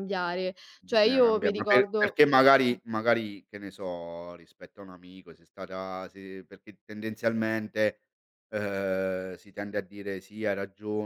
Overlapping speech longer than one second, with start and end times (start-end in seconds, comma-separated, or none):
0.8-2.2